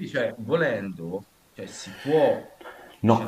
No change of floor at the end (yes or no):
no